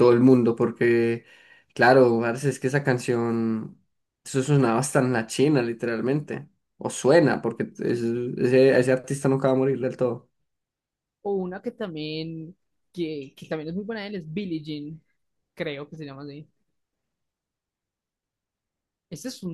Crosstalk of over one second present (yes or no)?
no